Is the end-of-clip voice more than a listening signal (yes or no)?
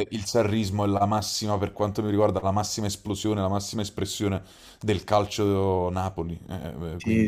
yes